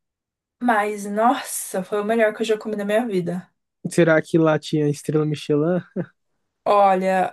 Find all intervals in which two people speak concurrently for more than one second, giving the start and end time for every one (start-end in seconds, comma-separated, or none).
none